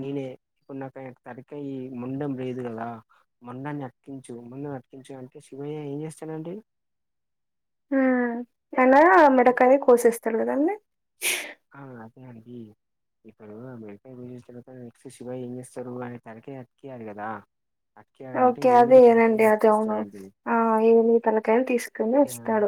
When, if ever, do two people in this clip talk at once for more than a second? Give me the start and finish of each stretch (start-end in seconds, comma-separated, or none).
18.5-20.0